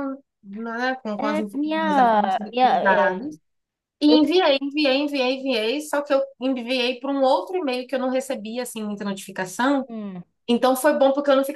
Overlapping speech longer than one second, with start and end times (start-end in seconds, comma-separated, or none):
1.2-3.2